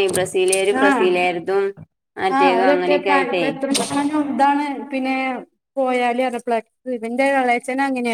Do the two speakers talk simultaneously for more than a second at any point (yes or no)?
no